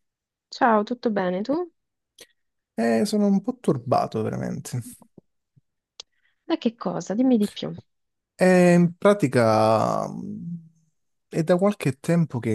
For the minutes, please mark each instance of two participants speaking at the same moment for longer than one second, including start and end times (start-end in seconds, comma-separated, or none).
none